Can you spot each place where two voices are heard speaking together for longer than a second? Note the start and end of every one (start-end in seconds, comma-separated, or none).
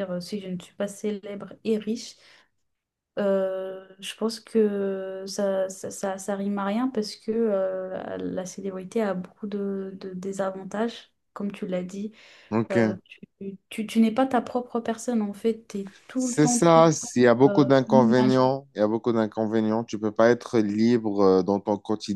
16.1-18.4